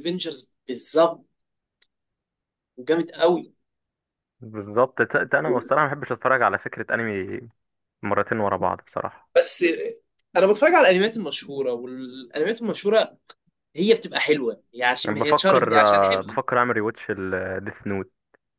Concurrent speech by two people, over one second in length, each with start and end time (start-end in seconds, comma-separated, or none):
15.1-16.4